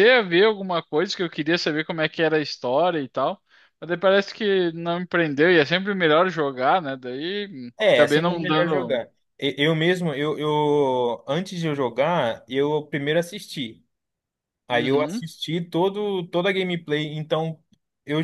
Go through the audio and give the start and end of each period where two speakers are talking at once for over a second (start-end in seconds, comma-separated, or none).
7.8-9.0